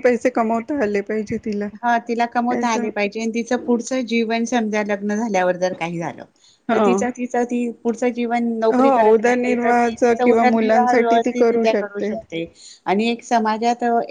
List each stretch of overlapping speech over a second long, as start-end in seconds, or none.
8.8-11.3